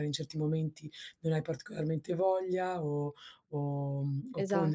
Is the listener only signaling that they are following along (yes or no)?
yes